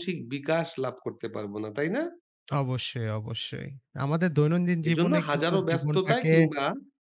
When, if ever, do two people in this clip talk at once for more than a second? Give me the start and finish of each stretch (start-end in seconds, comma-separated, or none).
4.9-6.3